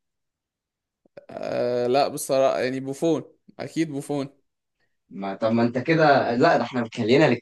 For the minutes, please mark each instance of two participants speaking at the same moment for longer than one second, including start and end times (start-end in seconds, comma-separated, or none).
none